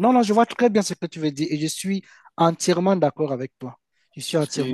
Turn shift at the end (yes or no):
no